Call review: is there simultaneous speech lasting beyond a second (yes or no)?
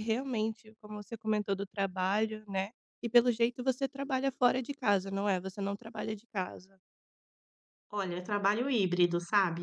no